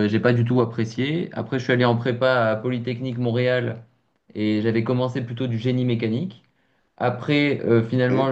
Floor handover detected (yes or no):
no